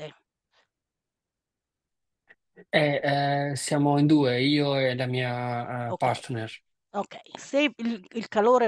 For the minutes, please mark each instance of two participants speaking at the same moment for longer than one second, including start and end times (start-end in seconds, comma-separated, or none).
none